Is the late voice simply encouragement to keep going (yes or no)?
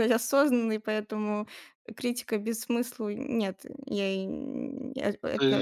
no